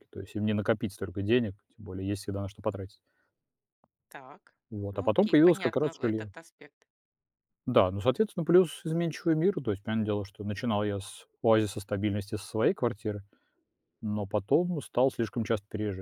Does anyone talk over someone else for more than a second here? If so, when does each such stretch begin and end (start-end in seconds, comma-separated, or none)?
4.7-6.3